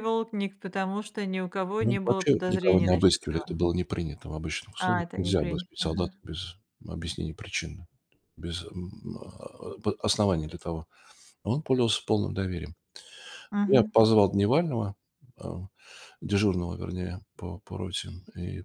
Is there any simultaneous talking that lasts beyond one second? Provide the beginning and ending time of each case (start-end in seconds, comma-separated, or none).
1.8-3.6, 4.8-6.1